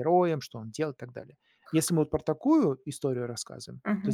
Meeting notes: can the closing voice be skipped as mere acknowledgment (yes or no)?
yes